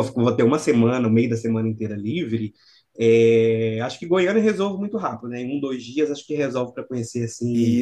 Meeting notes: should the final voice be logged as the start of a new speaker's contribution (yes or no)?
no